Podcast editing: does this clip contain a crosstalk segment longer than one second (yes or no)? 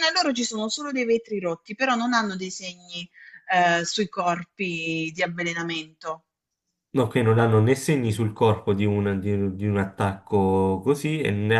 no